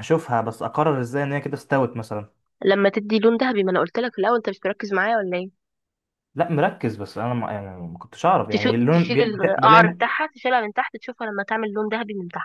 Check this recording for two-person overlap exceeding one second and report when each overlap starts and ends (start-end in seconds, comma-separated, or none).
8.5-10.1